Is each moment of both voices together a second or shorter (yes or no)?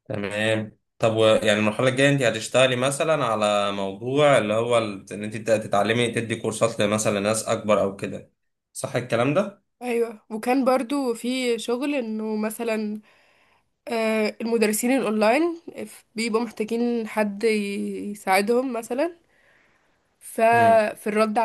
yes